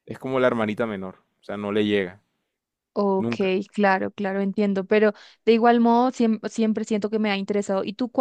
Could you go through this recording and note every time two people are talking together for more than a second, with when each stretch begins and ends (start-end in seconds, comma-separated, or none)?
none